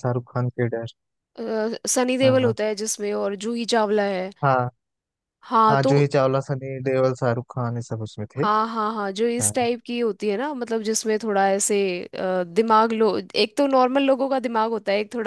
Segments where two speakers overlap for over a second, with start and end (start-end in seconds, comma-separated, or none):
none